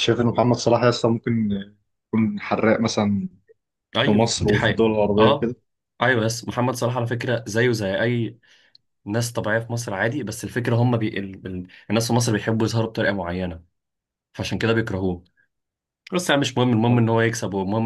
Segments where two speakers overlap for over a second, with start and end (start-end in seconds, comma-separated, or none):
4.0-5.5